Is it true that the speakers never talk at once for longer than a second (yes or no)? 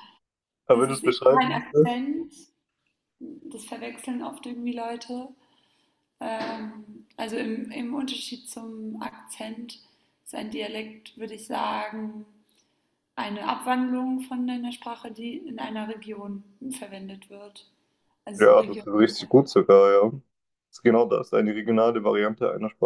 no